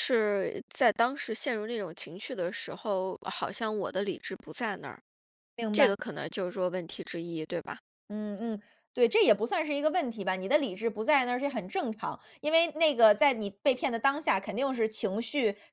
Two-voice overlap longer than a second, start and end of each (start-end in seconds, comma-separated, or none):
none